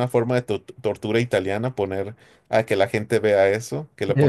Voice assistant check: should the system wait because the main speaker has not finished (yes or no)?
yes